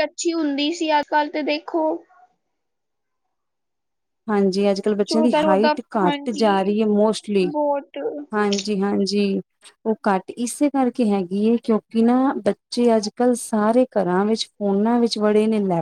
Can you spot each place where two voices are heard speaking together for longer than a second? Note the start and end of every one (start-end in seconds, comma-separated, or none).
5.0-6.8